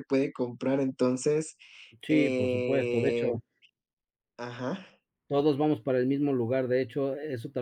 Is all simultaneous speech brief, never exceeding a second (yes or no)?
no